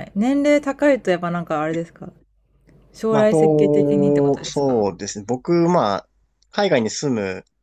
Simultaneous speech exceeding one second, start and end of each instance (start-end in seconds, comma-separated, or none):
3.1-4.8